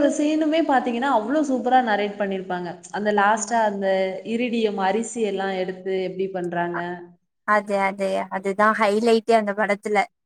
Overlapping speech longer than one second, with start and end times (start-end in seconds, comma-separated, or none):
none